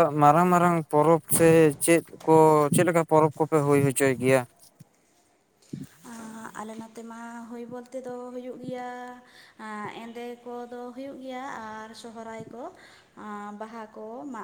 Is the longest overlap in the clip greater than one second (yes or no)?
no